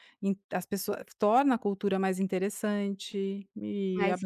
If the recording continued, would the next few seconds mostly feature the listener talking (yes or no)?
no